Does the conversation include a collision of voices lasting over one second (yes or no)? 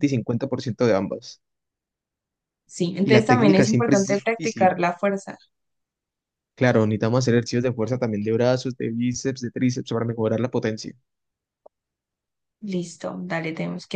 yes